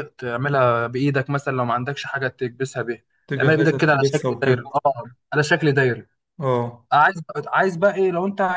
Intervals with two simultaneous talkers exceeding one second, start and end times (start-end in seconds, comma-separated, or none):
3.3-4.7